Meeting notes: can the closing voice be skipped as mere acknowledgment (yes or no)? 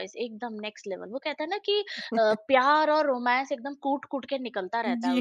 yes